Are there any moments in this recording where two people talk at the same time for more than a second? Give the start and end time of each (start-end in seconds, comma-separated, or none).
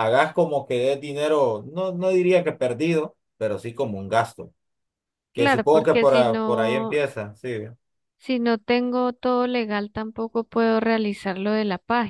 5.3-7.0